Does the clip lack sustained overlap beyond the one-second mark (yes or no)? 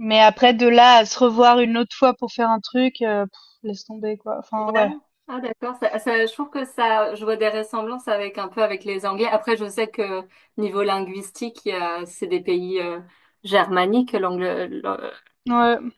yes